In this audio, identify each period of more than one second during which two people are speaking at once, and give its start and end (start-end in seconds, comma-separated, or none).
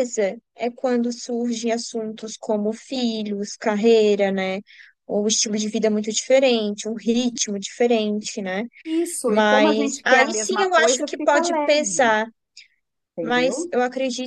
9.2-12.2